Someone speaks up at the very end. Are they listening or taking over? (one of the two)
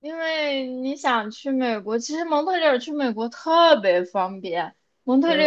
listening